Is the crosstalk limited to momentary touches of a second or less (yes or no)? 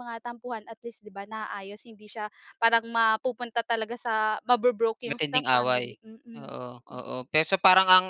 no